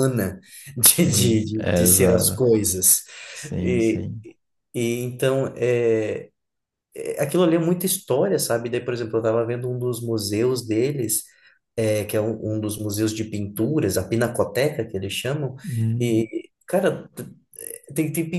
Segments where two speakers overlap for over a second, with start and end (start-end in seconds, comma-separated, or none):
0.9-2.5